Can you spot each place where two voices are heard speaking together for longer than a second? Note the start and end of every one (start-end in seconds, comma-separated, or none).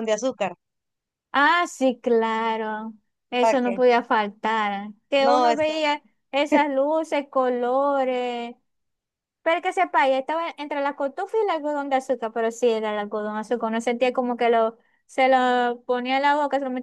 none